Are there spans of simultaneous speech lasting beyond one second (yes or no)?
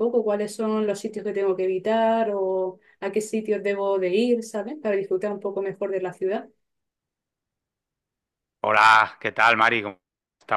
no